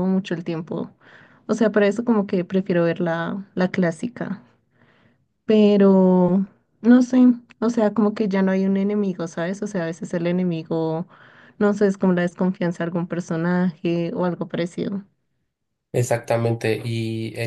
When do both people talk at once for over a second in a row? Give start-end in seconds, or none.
none